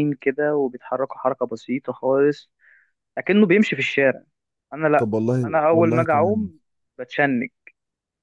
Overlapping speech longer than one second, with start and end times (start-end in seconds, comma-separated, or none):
5.0-6.5